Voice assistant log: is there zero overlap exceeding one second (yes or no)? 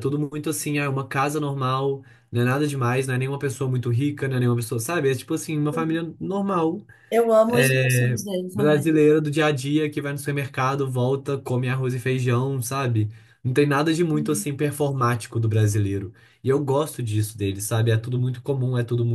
no